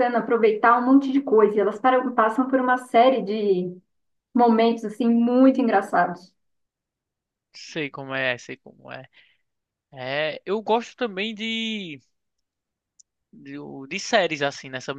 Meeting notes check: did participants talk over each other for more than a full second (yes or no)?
no